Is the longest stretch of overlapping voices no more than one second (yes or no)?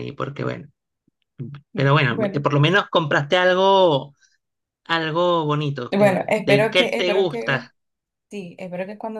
no